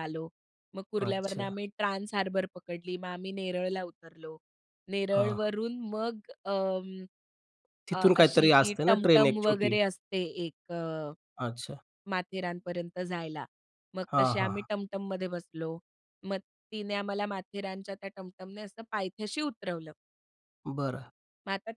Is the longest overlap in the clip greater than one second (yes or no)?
yes